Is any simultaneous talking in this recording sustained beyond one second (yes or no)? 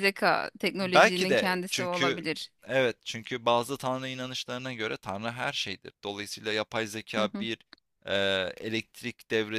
yes